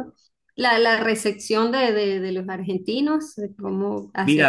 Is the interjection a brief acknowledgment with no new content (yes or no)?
no